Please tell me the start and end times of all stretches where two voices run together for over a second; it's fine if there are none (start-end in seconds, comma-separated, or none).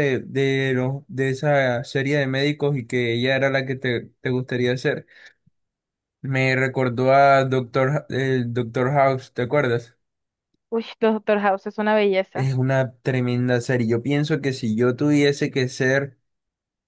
none